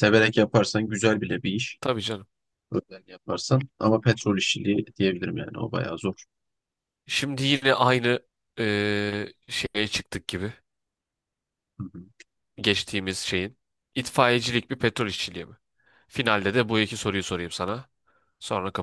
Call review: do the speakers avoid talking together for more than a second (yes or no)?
yes